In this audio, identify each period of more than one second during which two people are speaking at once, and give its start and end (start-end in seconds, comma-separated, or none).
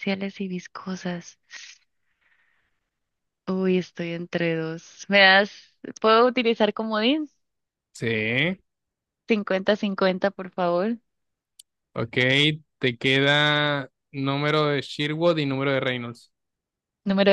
none